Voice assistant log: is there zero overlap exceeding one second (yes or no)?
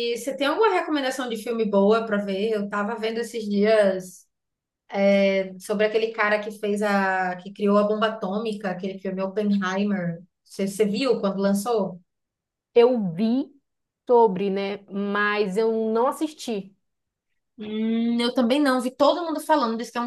yes